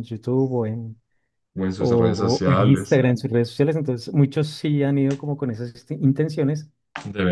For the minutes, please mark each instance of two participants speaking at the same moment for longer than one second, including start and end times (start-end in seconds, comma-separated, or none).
1.8-3.0